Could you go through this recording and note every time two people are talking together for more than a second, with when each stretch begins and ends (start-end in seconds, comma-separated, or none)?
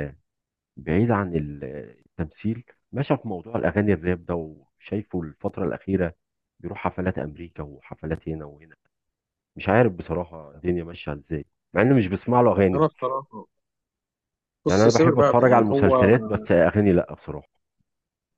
14.7-16.1